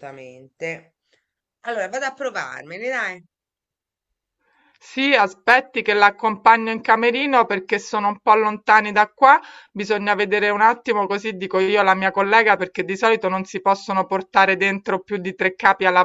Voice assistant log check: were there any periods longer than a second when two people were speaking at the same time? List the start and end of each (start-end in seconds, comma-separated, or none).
none